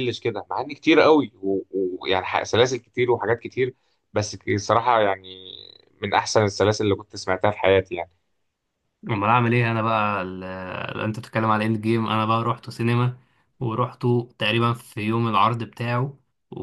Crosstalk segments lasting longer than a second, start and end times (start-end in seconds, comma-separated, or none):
none